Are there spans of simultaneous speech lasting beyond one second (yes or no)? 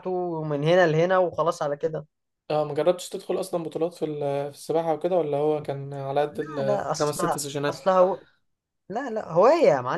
yes